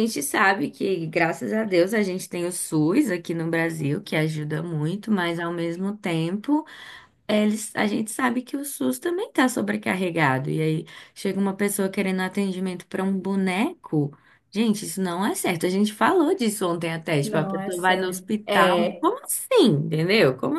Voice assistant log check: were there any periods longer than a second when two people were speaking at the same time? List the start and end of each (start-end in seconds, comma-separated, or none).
17.2-19.1